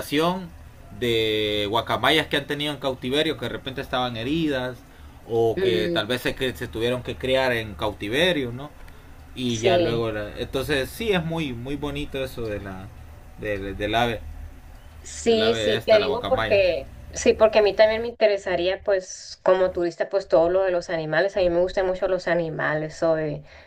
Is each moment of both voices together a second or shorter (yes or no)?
no